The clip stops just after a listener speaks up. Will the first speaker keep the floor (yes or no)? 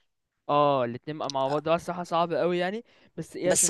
yes